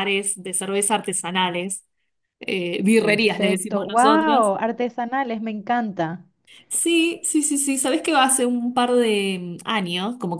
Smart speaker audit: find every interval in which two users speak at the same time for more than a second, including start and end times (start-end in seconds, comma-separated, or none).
3.0-4.5